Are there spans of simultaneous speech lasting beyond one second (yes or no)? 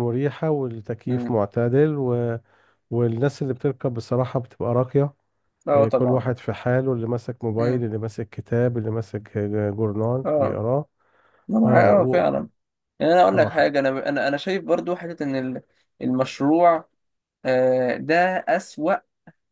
no